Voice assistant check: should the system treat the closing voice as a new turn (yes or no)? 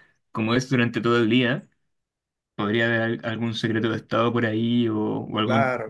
yes